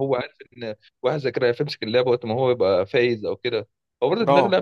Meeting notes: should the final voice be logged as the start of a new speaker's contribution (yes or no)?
no